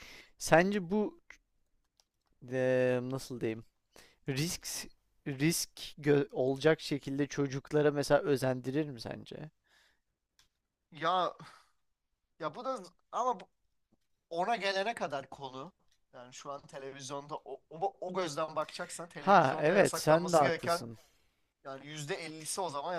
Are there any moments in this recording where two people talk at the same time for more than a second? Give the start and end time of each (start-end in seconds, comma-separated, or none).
19.2-20.9